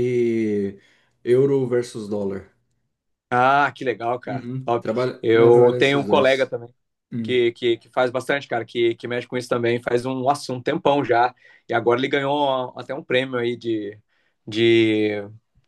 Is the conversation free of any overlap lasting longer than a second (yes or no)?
no